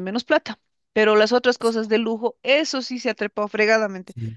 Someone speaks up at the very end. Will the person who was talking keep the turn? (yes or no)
yes